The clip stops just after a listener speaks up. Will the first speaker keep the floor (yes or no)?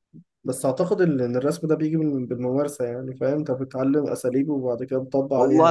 no